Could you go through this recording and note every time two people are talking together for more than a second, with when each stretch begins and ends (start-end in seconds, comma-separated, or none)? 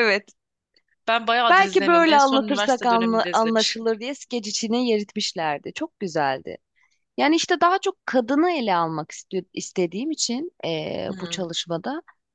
1.5-3.9